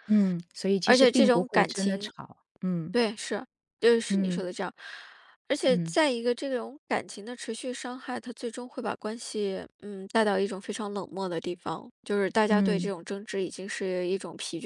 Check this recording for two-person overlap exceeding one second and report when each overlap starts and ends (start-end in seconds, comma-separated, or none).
0.8-2.1